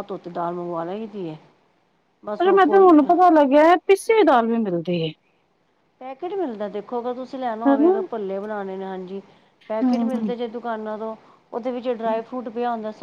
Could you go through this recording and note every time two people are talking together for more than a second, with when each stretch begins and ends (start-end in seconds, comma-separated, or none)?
none